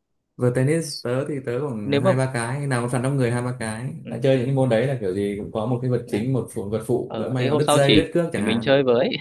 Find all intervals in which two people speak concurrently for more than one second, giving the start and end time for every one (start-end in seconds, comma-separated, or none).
7.0-8.7